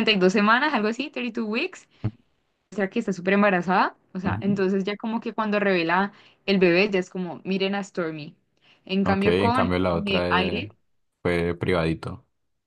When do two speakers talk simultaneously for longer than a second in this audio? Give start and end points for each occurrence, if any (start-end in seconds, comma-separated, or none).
9.0-10.7